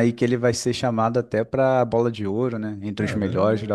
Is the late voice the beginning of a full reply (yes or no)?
yes